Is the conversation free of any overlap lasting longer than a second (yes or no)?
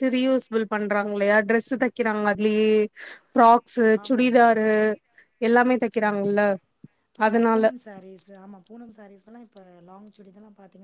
yes